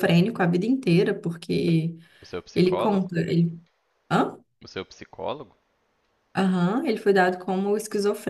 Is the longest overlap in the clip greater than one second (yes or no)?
no